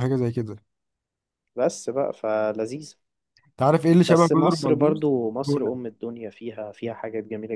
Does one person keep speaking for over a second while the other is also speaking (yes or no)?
yes